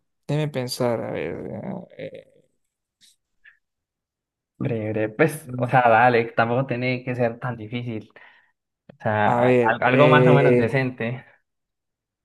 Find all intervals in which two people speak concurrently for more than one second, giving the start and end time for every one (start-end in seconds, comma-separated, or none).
9.2-10.7